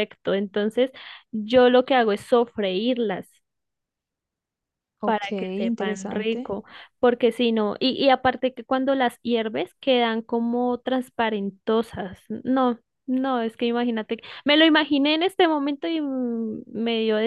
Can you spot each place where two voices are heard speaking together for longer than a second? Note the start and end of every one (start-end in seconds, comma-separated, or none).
5.0-6.5